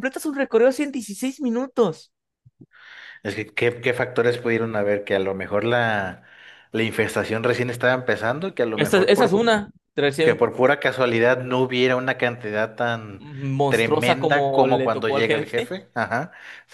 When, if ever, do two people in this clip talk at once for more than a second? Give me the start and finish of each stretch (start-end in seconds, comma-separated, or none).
13.7-15.7